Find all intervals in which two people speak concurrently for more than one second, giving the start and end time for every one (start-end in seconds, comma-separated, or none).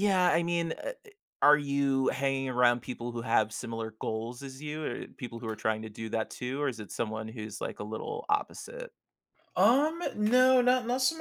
none